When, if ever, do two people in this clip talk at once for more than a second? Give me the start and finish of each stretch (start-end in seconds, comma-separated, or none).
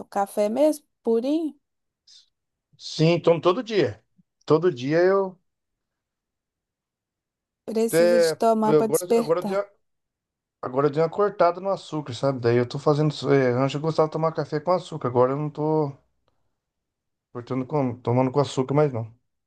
7.9-9.7